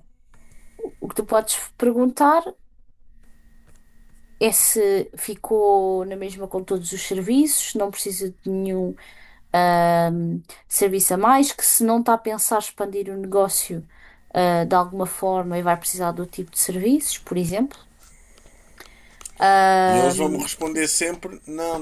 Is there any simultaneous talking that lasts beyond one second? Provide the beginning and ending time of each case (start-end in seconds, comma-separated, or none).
none